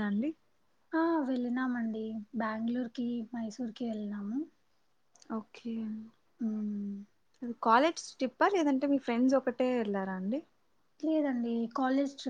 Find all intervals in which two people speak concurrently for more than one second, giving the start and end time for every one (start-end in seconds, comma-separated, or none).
none